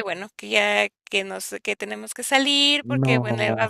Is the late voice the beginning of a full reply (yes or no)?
no